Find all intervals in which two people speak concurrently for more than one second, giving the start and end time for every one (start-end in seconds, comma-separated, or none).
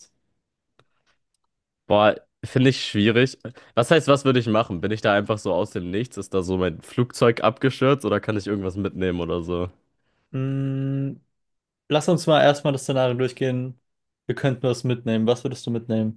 none